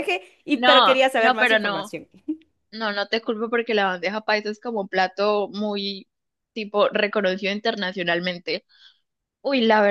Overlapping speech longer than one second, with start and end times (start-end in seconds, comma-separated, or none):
0.5-1.9